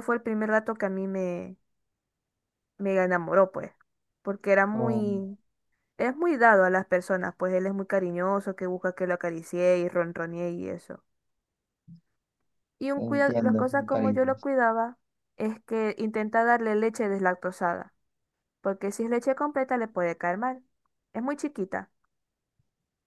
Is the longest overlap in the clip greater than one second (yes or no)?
yes